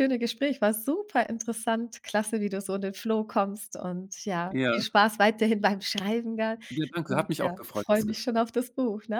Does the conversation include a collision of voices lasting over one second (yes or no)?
yes